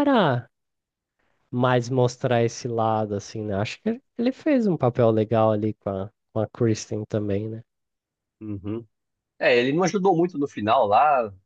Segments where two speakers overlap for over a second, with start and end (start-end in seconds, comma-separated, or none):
none